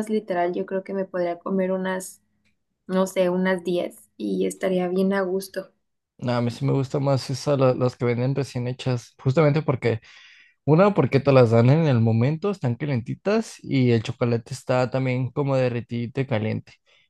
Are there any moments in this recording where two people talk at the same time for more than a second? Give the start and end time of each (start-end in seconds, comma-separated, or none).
none